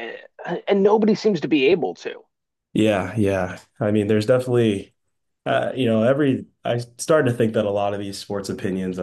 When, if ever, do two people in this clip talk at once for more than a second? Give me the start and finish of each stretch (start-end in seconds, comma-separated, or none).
none